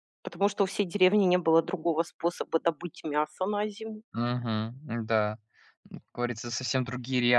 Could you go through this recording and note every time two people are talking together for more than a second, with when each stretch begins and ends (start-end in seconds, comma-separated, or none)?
none